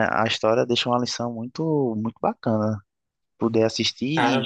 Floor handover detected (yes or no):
no